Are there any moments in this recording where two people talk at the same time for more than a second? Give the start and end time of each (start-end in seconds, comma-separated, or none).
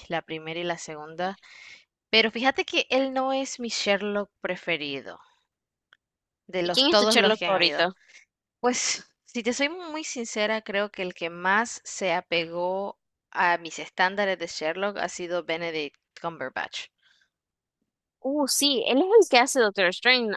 6.6-7.9